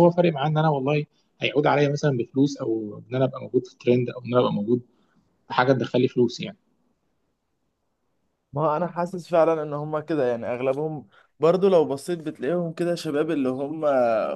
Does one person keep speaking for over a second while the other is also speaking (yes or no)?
no